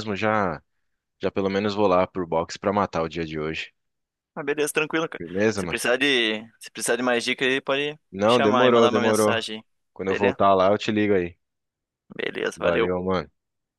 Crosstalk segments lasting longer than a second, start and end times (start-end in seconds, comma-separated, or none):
8.1-9.3